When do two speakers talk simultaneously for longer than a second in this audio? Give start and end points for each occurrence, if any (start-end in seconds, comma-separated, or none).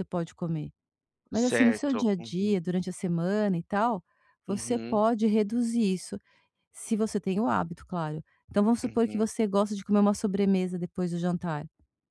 1.3-2.6